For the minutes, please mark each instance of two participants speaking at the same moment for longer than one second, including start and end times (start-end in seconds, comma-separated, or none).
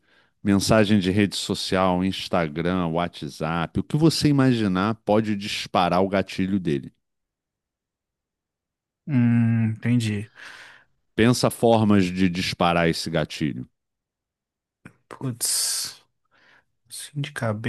none